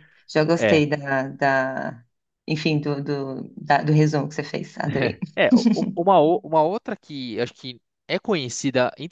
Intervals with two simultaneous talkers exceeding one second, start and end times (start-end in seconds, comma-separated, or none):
none